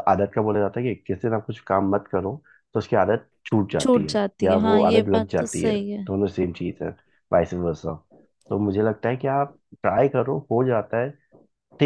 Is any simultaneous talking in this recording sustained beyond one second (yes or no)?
yes